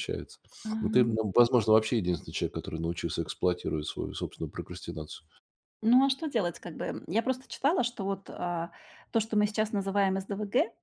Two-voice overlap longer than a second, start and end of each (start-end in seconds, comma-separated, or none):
none